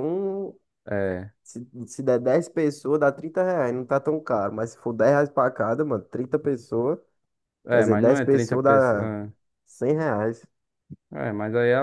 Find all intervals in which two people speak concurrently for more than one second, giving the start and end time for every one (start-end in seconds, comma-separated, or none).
7.7-9.2